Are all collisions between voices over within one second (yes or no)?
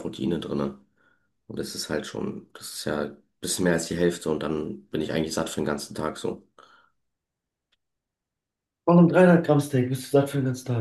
yes